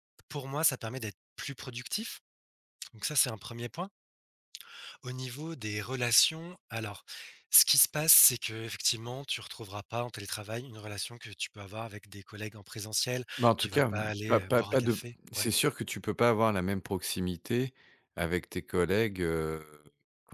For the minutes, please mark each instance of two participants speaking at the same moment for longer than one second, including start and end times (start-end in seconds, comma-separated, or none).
13.4-15.5